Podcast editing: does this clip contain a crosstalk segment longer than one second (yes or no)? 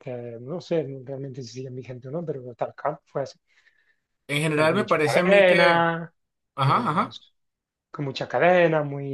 yes